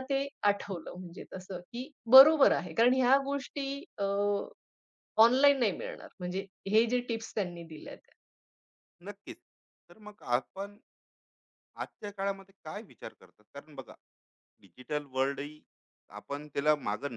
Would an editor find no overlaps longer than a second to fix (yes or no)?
yes